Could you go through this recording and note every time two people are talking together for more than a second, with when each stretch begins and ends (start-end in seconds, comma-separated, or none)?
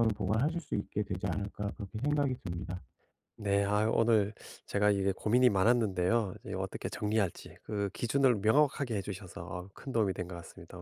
none